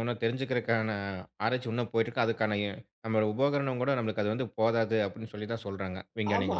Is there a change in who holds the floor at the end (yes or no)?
yes